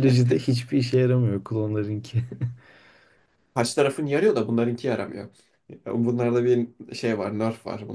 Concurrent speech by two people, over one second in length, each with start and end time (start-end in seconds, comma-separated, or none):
none